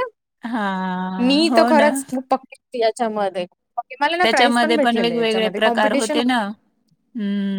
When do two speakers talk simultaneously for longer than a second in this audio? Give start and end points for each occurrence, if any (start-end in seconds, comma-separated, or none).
4.2-6.2